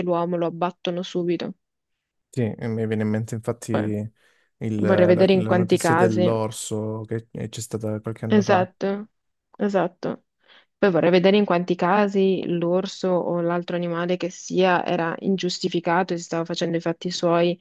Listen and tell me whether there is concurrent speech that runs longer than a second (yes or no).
yes